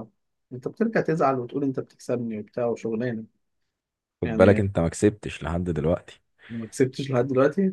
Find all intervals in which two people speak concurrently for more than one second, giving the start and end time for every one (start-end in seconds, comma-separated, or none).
none